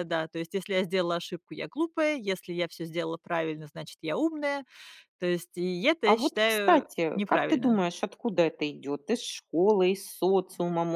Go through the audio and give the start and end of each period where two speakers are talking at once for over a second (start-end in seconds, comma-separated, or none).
6.0-7.7